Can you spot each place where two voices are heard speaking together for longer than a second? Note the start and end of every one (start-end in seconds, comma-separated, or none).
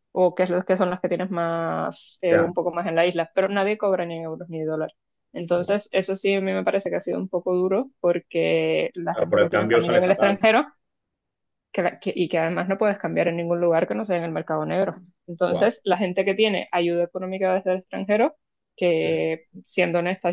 9.1-10.4